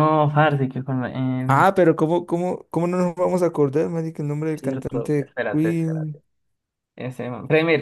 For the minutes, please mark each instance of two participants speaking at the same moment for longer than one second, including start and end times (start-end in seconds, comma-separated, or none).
4.6-6.2